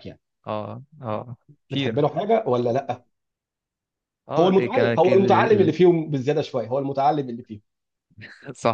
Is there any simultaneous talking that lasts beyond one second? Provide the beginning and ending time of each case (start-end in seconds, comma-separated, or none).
4.4-5.7